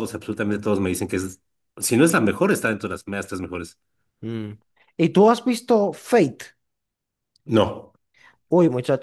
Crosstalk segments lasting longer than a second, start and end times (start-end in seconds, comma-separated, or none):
none